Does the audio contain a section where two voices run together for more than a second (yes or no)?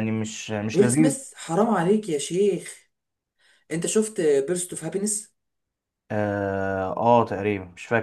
no